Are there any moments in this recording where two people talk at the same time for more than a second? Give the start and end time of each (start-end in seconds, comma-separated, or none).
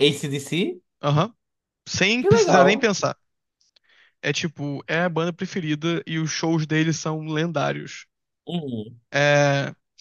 none